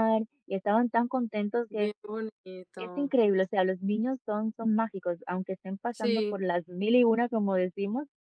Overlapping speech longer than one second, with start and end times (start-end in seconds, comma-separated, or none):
none